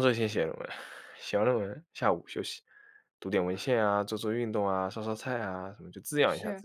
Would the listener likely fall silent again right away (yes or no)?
yes